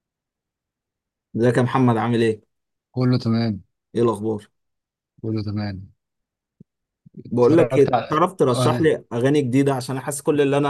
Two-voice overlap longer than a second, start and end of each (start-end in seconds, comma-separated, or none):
7.3-8.9